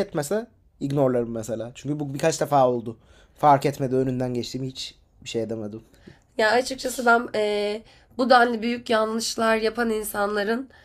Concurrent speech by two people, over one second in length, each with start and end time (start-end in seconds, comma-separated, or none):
none